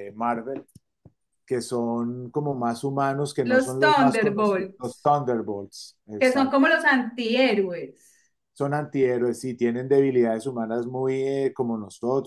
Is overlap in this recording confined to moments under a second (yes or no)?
no